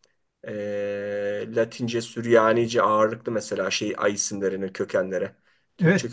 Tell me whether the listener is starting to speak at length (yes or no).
yes